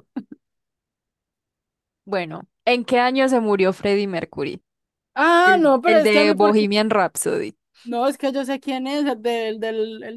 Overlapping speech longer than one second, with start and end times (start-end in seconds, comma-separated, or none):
5.4-6.7